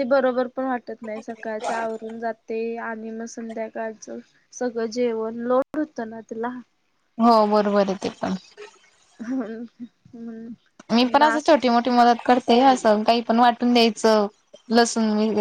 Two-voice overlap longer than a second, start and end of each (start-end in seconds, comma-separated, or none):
none